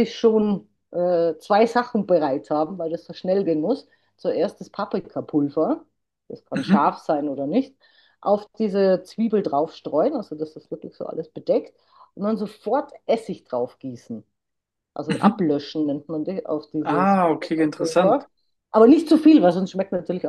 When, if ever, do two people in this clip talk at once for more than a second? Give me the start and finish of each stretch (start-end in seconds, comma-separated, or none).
16.8-18.3